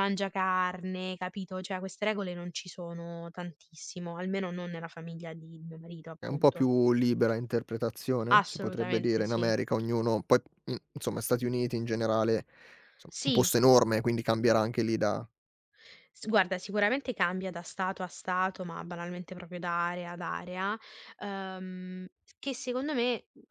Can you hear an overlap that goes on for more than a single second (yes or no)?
yes